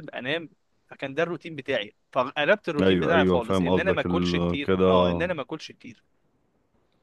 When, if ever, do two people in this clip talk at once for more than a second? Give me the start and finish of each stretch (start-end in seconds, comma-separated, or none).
2.8-4.9